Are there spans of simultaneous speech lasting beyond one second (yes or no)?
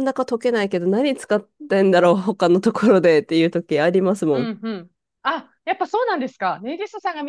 no